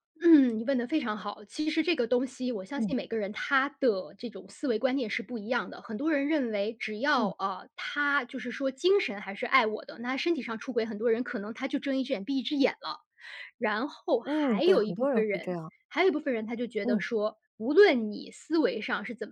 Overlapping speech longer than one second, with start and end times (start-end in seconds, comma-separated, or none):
14.2-15.7